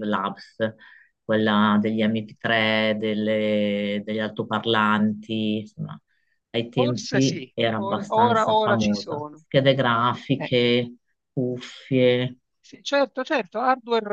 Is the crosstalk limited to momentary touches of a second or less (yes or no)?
no